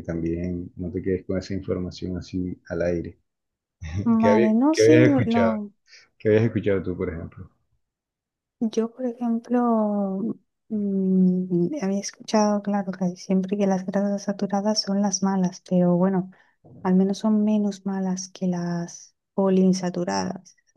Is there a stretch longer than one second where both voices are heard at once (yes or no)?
yes